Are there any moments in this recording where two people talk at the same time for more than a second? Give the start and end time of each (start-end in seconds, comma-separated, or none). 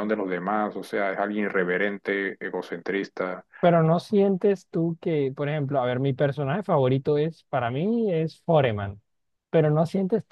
none